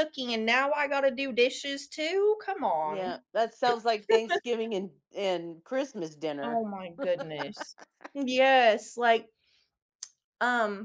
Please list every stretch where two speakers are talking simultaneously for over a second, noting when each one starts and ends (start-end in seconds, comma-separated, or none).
none